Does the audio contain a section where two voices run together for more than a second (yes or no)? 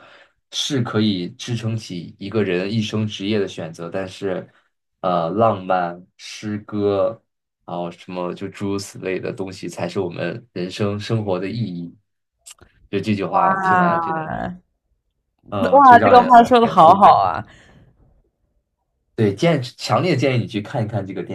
yes